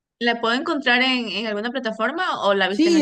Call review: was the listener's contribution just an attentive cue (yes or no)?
no